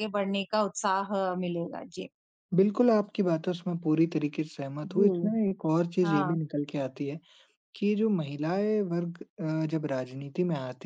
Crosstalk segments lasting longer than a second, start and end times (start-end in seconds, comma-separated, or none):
none